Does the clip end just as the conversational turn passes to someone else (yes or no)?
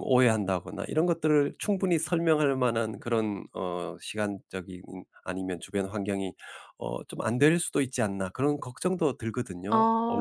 yes